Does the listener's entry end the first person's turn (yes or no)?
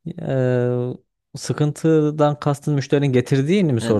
yes